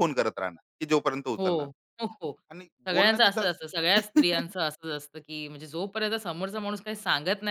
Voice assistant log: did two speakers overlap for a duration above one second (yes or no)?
yes